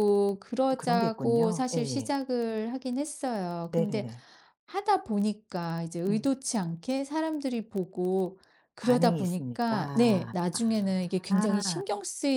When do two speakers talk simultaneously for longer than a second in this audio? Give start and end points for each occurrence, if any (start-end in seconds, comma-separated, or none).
0.7-2.1, 8.8-11.8